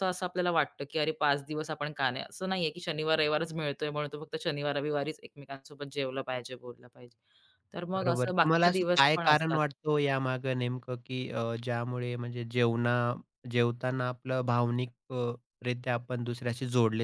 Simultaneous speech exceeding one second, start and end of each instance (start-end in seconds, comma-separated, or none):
8.0-9.6